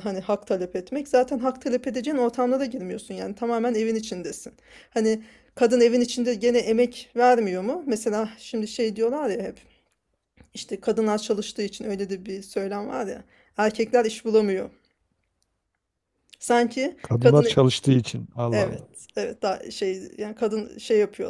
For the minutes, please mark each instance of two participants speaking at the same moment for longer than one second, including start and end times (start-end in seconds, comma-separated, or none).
none